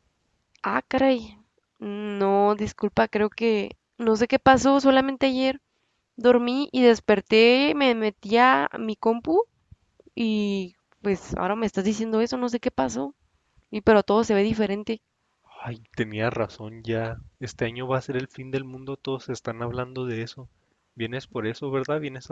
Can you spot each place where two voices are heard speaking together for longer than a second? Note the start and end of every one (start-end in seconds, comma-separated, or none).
none